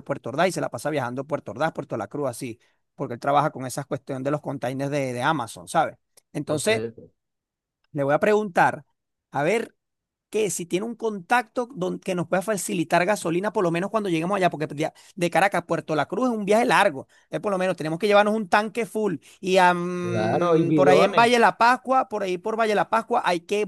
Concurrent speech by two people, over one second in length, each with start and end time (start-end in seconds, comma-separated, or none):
20.0-21.3